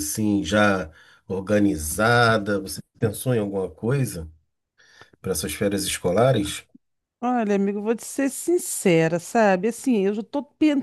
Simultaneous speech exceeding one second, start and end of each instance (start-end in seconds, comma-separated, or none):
none